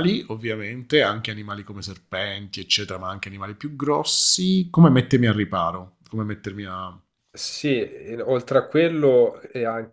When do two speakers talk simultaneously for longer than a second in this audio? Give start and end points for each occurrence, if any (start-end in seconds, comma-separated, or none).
none